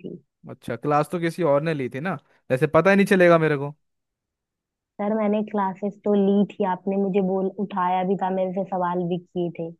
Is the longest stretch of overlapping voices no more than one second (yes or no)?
yes